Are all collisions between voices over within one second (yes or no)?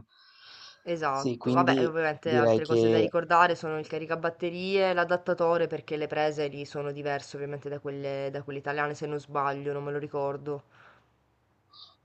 no